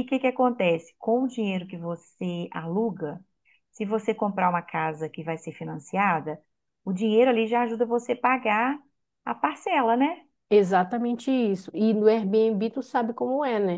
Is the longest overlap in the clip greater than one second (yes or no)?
no